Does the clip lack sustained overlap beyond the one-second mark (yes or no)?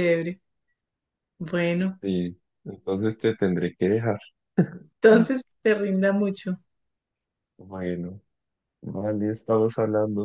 yes